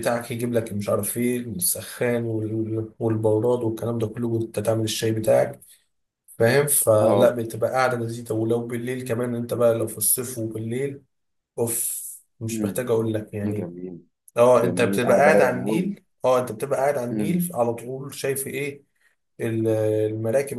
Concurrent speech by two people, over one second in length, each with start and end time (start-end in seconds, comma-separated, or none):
14.5-15.9